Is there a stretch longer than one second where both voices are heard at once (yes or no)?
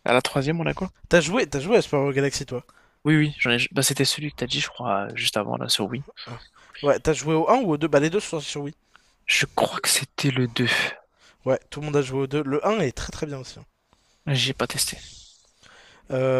no